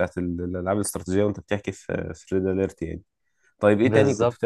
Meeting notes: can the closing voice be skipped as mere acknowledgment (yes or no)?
yes